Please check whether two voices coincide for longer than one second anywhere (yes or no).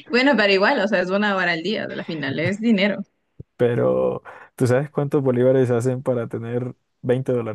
no